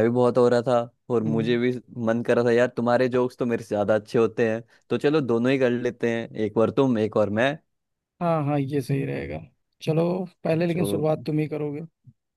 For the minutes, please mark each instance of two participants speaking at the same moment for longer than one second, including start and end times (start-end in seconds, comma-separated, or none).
none